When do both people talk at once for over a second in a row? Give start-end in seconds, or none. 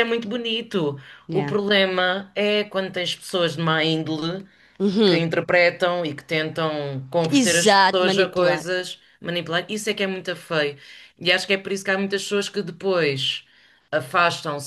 7.3-8.7